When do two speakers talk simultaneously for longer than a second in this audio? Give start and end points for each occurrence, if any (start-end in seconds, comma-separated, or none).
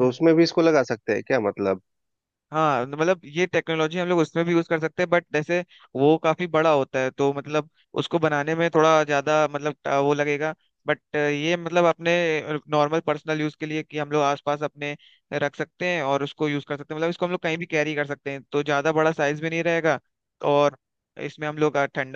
none